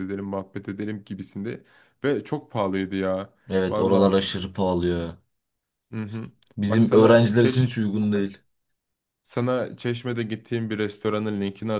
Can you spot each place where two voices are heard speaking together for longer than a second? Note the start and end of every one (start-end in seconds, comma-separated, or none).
6.7-8.3